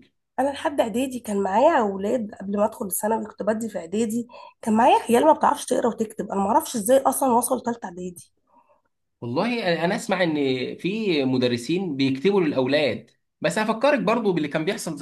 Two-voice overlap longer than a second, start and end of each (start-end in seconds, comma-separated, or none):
none